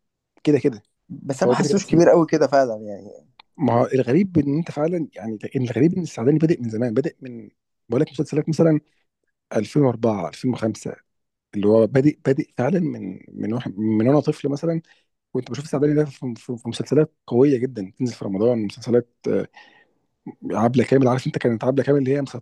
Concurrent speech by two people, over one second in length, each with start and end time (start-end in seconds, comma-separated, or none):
none